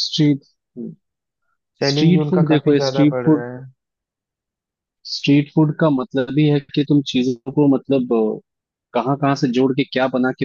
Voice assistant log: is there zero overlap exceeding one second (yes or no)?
no